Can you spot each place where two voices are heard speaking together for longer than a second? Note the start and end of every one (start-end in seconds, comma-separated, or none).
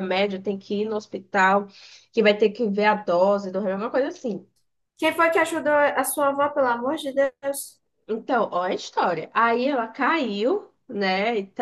none